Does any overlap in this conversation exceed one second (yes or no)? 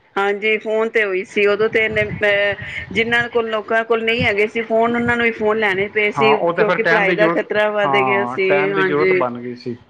yes